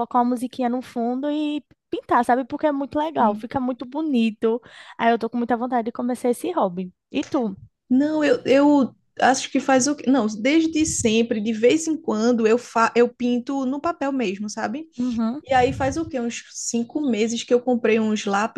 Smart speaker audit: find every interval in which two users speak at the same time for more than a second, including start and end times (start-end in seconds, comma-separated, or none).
none